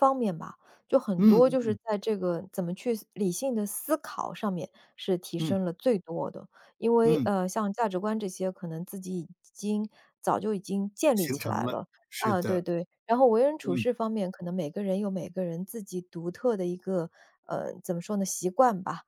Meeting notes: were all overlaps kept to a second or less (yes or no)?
no